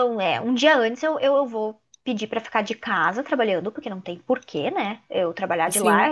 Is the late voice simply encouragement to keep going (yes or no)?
yes